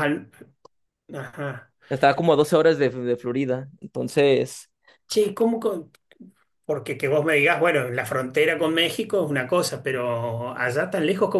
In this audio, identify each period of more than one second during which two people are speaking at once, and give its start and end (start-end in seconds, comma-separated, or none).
none